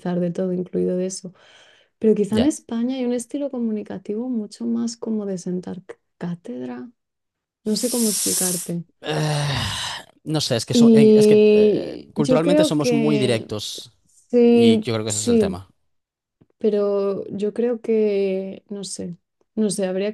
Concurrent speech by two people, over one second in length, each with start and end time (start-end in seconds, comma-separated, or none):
10.7-13.5, 14.4-15.6